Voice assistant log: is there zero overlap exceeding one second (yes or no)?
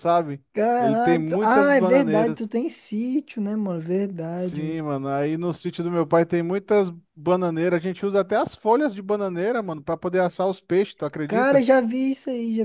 no